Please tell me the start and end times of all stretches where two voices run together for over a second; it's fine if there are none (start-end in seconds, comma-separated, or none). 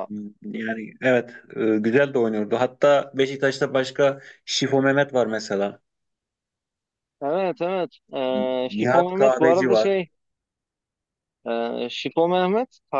8.7-9.9